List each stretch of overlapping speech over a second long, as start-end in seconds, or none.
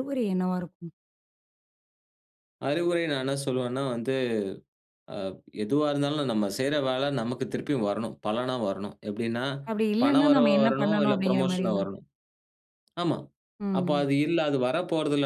10.0-11.8